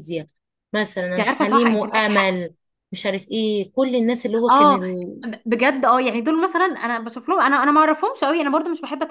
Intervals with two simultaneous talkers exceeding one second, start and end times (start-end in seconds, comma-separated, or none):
1.1-2.4